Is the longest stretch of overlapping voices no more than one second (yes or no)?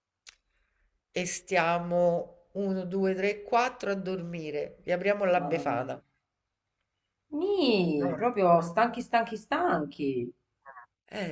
yes